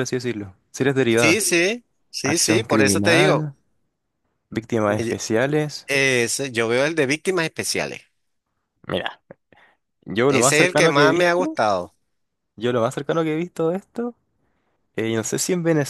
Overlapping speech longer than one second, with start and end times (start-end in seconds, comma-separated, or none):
2.2-3.5, 10.3-11.5